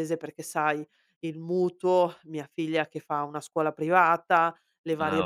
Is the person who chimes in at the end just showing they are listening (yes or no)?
yes